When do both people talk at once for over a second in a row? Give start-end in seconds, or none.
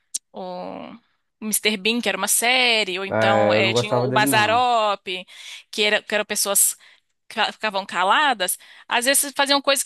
3.1-4.7